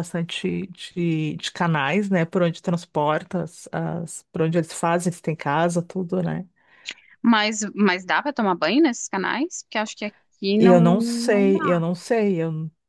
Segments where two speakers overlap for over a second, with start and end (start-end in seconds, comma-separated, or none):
10.6-11.8